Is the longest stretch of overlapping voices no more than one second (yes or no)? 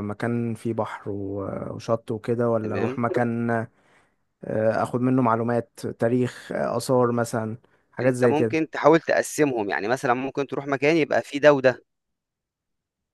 yes